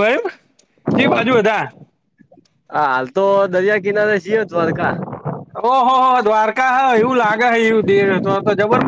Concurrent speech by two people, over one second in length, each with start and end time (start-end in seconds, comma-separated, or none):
none